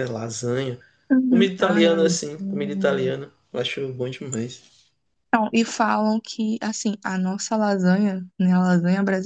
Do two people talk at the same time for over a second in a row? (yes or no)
yes